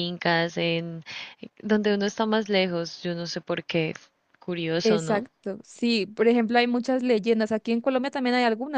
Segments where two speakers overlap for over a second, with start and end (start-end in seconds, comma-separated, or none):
none